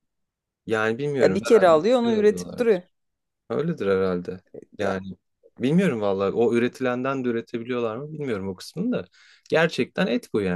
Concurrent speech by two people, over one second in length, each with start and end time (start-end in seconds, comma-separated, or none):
1.2-2.8